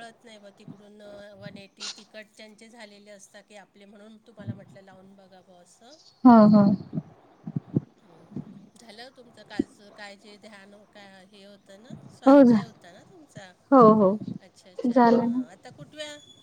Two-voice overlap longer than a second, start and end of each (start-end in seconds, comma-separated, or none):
none